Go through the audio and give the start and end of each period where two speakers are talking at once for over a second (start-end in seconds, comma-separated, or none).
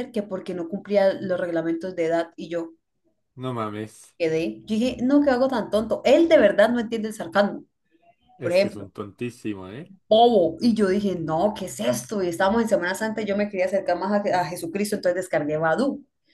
none